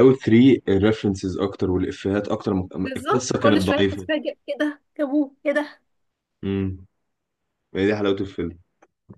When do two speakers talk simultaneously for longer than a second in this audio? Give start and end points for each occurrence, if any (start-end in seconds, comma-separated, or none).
2.8-4.1